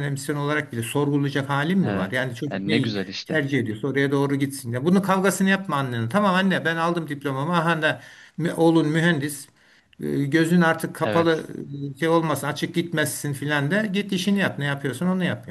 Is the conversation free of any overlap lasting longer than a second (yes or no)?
no